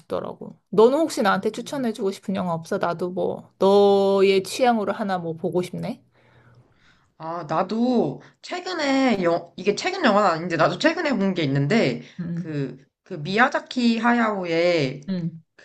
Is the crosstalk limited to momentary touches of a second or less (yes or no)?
yes